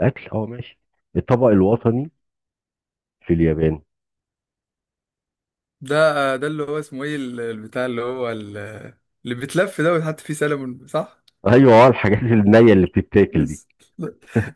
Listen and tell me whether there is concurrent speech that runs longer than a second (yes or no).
no